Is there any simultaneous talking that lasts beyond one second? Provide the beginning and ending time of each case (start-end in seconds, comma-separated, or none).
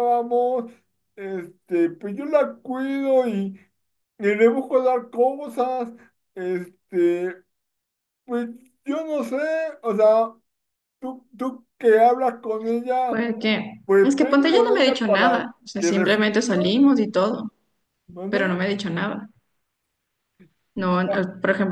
13.8-17.1